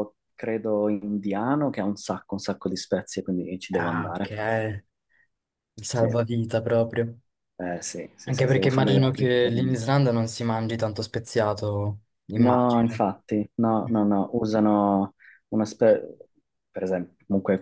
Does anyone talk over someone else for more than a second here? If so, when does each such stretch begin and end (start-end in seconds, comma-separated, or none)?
8.2-9.7